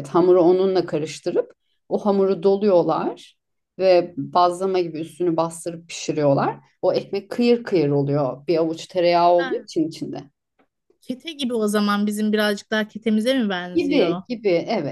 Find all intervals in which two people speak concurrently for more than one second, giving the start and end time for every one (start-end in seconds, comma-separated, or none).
none